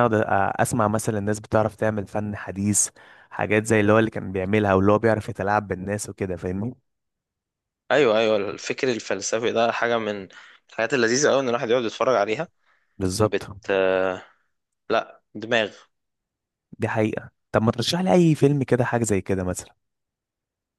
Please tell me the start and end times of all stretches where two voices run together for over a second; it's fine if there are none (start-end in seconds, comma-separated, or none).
none